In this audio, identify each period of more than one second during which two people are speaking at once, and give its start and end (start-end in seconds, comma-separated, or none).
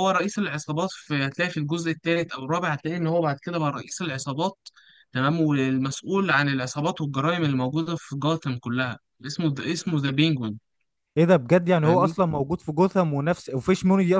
none